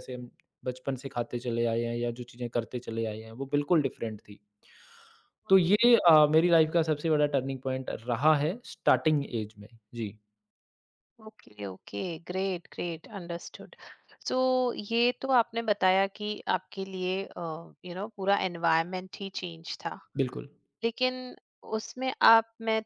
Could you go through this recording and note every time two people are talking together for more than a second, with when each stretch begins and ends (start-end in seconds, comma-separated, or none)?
none